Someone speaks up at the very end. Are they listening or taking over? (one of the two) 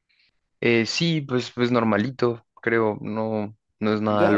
taking over